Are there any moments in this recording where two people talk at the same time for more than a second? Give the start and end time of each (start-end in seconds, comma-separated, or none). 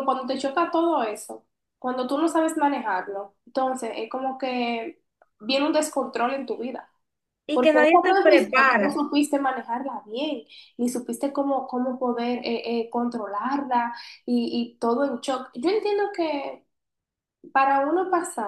7.5-9.0